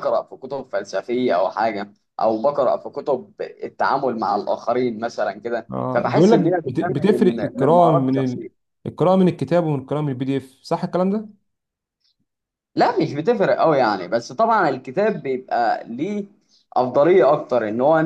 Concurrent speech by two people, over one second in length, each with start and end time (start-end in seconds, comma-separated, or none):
5.7-8.5